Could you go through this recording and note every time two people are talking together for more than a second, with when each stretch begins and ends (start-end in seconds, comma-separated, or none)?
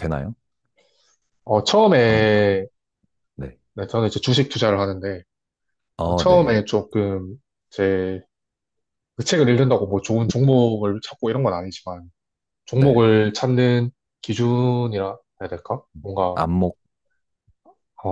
none